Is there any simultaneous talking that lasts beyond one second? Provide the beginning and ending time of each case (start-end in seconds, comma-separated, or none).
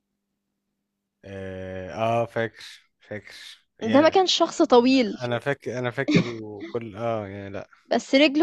none